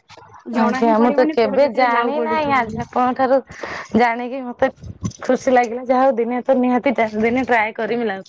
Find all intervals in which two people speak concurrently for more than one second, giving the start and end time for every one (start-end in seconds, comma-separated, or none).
0.6-2.8